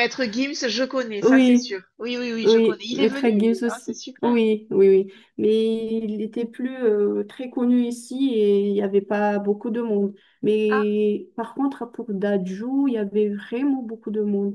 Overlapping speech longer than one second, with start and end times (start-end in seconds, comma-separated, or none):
2.4-4.4